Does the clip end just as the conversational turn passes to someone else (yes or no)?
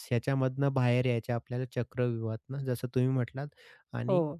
no